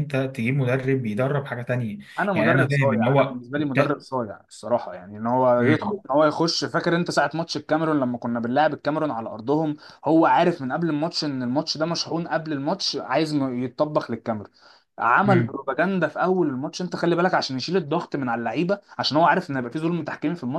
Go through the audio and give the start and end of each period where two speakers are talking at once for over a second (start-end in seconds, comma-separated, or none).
2.3-4.0